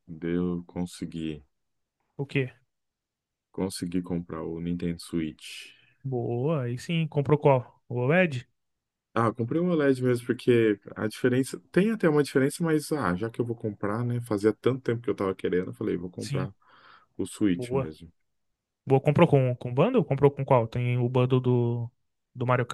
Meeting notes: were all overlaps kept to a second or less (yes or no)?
yes